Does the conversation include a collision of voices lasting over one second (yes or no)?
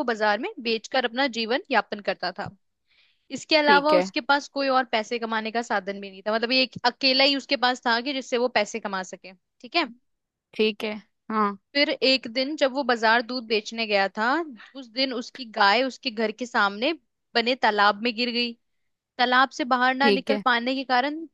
no